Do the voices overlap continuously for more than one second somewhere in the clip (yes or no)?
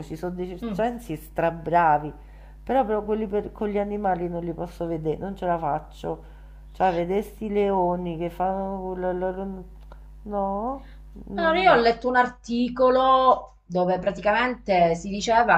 no